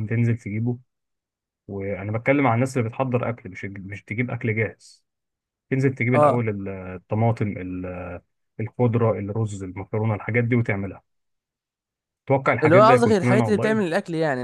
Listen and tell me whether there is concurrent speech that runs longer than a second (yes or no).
yes